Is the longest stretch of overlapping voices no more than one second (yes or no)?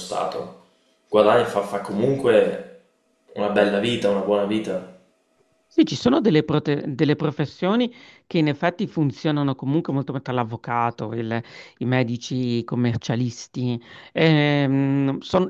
yes